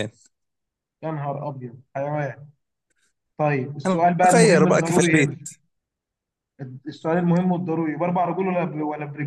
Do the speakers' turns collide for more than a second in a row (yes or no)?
yes